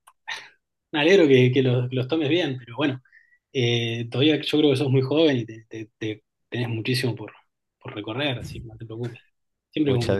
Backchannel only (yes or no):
no